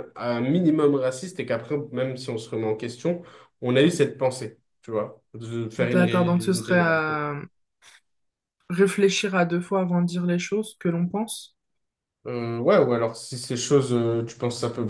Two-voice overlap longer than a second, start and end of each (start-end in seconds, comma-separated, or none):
5.8-7.0